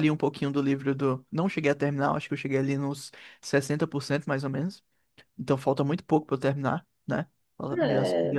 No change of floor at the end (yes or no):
no